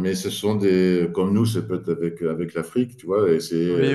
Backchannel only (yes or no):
yes